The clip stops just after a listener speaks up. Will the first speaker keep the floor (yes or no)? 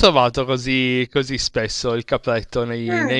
yes